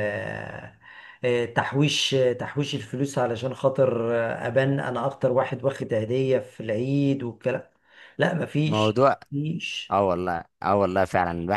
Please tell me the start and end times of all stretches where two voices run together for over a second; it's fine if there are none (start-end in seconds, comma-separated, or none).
none